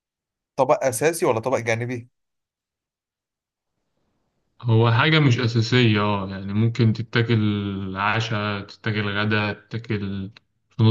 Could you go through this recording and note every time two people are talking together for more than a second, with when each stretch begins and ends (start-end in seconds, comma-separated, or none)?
none